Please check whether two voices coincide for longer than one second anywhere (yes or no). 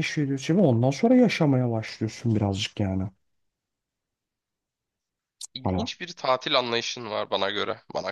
no